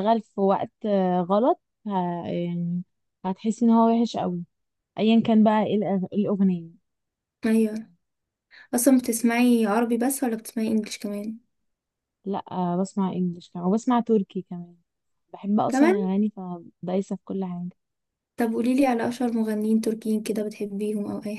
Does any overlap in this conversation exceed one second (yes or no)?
no